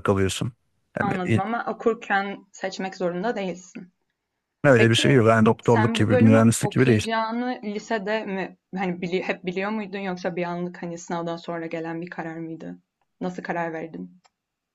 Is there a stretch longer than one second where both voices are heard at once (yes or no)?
yes